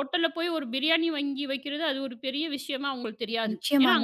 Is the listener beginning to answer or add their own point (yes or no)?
yes